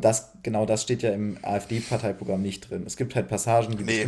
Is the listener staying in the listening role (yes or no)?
yes